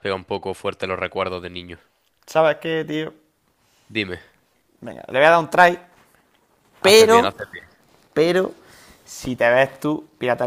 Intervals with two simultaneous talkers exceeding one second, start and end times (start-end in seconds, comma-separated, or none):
none